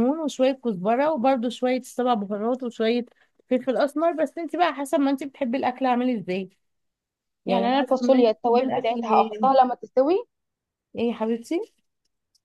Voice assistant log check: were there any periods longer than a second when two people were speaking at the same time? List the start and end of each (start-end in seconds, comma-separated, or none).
7.5-9.5